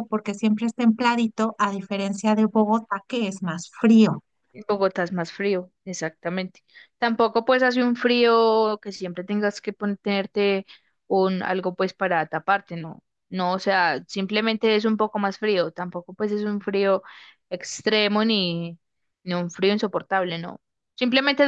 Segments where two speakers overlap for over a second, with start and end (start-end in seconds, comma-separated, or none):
none